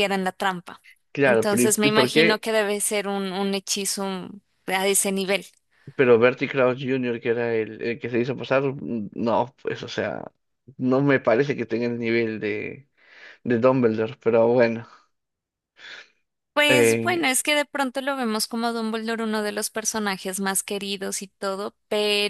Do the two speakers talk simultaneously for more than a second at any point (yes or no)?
yes